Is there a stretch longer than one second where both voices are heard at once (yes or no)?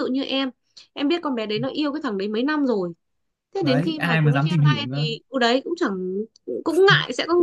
yes